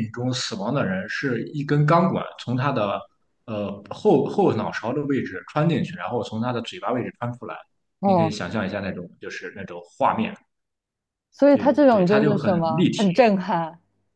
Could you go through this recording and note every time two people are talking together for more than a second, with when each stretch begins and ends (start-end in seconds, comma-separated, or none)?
11.5-13.2